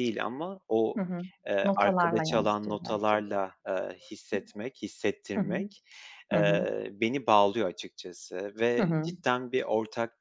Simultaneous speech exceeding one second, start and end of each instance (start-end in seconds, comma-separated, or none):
1.6-3.3